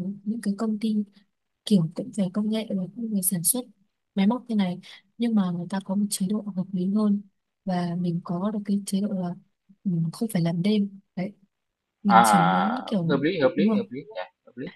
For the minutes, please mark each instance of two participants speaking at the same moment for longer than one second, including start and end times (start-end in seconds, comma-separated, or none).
12.1-13.8